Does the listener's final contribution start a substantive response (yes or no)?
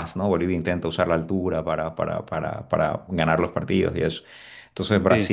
no